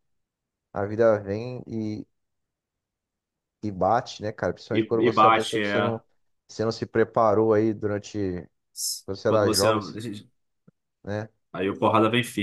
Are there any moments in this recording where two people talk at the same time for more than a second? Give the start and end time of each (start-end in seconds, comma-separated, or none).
4.7-6.0